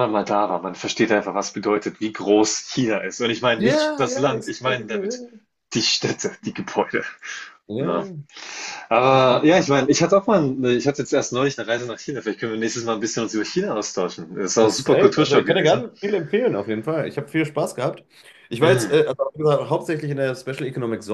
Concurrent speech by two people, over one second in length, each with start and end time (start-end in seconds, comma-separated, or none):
3.5-5.2, 14.6-15.8